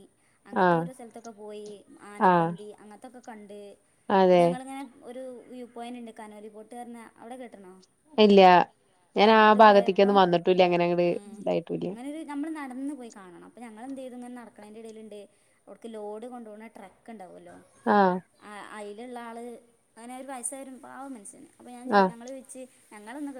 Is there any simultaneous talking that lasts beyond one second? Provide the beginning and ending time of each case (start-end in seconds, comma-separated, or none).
none